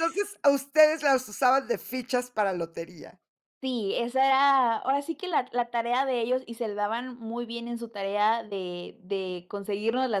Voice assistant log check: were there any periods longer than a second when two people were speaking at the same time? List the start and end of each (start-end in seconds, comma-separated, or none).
none